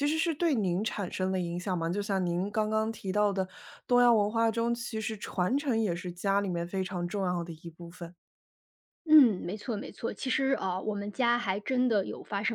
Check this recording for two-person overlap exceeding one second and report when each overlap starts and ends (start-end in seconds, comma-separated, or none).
none